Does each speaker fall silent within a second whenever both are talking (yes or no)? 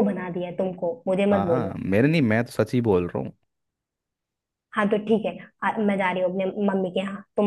yes